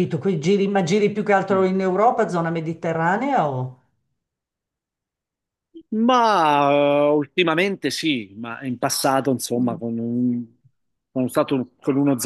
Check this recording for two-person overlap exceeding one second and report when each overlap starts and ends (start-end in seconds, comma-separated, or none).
none